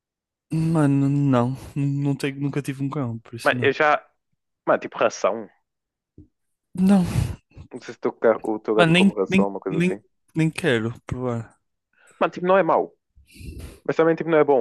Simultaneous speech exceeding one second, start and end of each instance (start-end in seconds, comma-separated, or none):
8.7-10.0